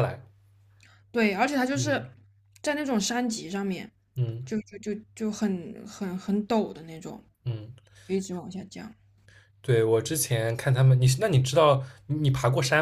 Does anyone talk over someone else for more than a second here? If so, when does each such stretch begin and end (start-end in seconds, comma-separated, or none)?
none